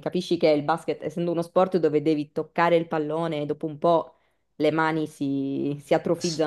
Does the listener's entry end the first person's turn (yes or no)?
yes